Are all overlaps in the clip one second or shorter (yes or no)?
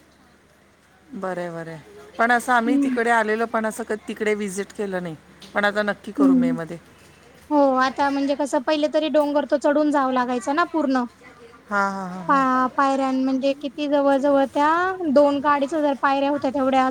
yes